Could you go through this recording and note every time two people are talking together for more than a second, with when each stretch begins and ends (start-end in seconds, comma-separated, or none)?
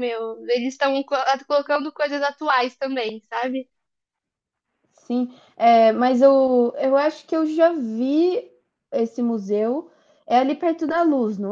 none